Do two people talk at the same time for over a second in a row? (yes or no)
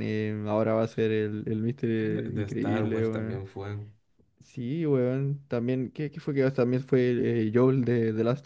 yes